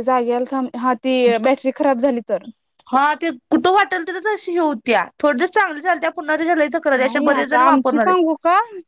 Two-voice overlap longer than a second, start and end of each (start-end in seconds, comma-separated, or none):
none